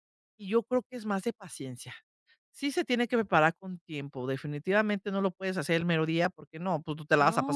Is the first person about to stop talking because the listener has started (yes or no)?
yes